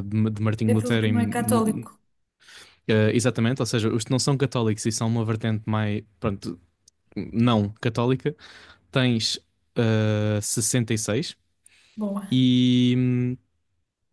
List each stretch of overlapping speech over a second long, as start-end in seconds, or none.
0.7-1.9